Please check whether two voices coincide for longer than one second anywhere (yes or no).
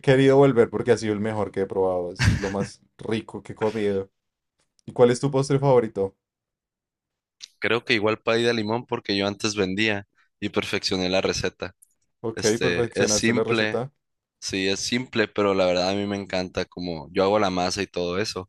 yes